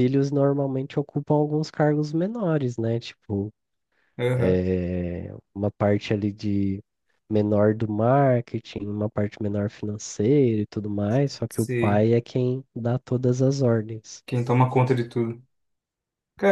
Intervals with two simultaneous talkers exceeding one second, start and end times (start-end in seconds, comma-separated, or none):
none